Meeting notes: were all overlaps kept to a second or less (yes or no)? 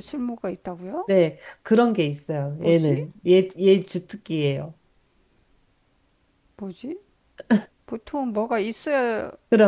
yes